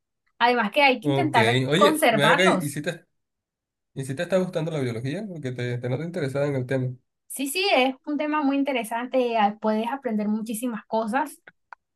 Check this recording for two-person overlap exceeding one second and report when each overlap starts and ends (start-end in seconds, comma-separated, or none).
1.0-2.8